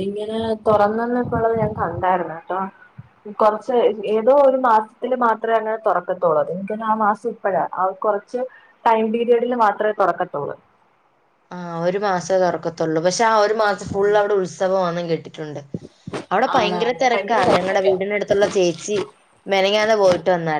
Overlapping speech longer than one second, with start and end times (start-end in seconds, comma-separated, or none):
16.6-18.0